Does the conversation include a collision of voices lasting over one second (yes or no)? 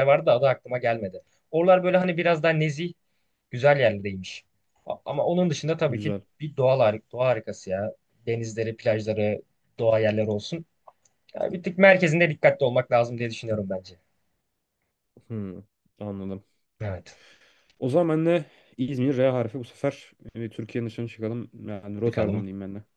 no